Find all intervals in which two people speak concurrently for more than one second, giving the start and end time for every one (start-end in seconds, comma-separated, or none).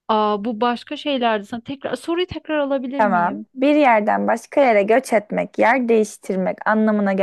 none